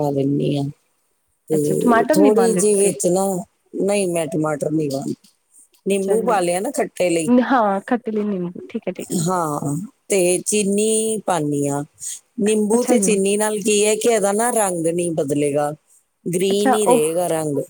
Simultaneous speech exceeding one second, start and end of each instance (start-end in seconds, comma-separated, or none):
1.6-2.9